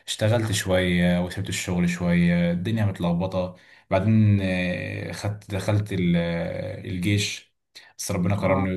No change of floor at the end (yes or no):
yes